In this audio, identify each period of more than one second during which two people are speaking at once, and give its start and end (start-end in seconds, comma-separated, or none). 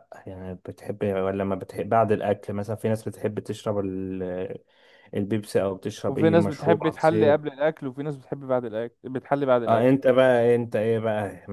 6.1-7.4